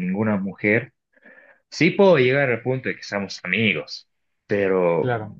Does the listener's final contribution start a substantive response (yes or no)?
no